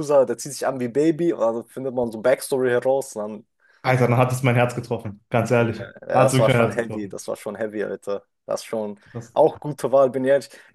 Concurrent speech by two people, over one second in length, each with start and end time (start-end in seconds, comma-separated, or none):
5.6-7.2